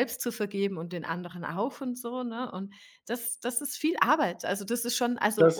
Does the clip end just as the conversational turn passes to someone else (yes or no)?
yes